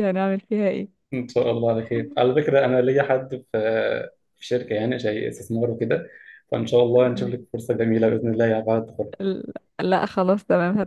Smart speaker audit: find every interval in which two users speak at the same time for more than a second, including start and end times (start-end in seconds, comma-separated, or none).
none